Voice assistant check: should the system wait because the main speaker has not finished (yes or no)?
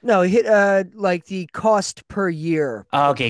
no